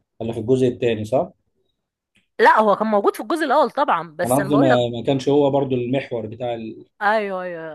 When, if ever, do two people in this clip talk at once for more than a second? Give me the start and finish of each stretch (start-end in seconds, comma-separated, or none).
none